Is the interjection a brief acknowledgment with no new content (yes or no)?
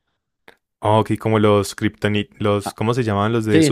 no